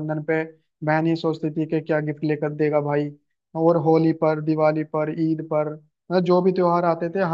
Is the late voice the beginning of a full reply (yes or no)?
no